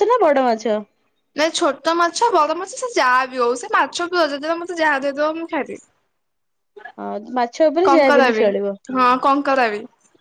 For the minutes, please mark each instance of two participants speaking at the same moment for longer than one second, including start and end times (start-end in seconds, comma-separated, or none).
none